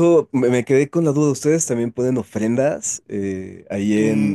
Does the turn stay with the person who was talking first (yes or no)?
no